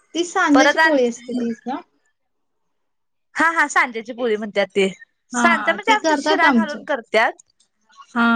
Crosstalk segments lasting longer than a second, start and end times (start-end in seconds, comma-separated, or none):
5.4-6.8